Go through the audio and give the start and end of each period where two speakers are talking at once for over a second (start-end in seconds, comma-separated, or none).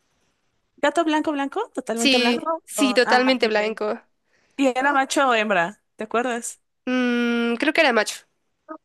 1.9-3.8